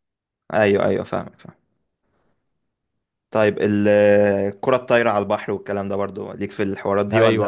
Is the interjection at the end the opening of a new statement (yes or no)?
yes